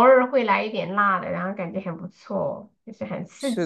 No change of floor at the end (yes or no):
no